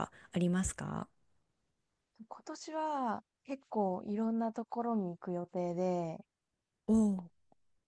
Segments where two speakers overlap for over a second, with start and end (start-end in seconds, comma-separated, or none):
none